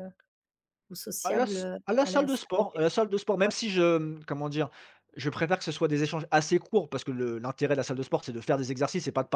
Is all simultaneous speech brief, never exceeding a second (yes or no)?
no